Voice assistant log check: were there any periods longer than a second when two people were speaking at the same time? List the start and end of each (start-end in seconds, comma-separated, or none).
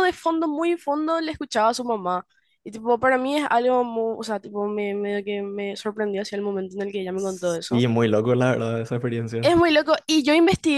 none